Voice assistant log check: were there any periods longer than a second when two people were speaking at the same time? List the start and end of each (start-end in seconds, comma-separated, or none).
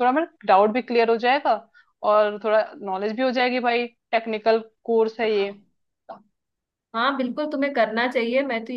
none